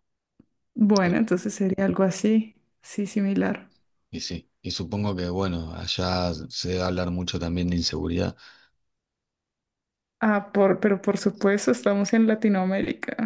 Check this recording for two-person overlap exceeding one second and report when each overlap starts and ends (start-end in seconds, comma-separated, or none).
none